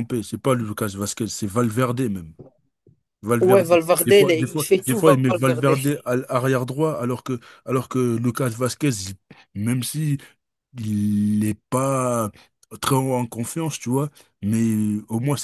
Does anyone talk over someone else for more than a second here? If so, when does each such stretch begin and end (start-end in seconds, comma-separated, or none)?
3.4-5.7